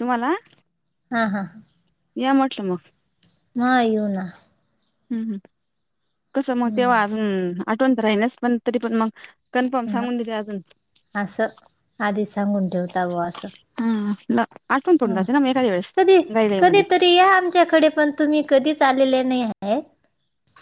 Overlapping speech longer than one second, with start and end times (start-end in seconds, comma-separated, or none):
none